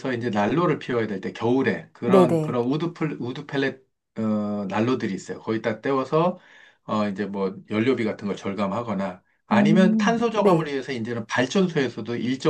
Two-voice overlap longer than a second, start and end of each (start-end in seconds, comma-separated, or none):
9.5-10.7